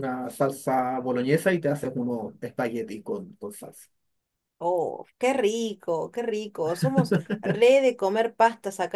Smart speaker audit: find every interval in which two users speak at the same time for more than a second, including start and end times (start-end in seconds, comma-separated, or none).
none